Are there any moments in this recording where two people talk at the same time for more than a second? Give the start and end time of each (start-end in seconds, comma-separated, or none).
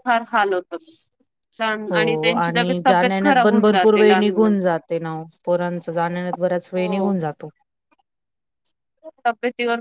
1.9-4.7